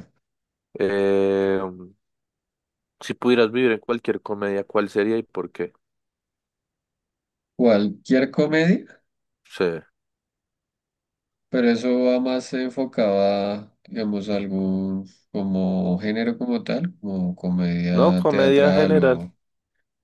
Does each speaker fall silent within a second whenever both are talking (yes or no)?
no